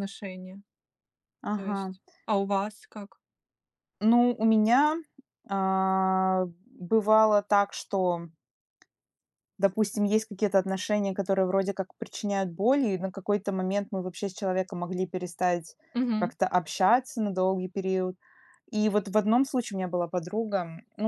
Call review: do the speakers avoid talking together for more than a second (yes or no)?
yes